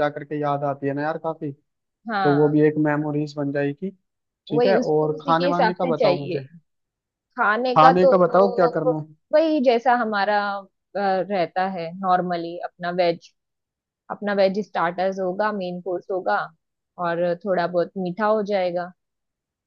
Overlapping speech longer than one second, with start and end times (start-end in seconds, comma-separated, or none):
4.5-6.4